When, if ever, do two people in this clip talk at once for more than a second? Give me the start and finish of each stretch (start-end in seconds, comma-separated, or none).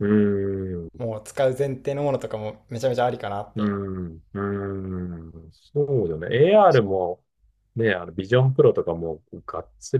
none